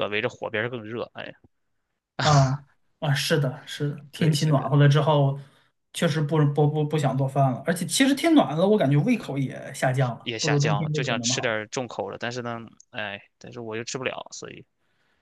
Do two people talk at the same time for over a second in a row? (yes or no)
yes